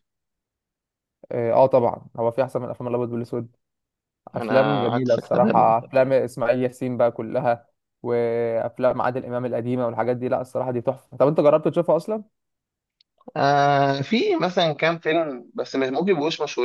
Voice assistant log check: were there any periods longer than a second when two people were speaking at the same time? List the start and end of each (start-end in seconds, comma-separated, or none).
4.3-5.7